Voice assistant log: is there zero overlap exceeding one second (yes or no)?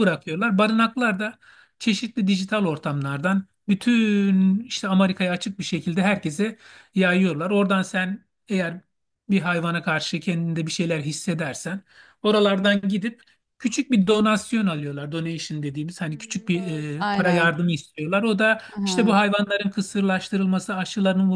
no